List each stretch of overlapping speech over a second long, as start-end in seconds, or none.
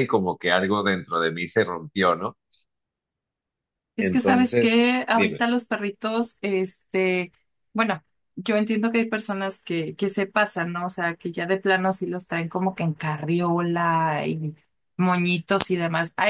4.0-5.4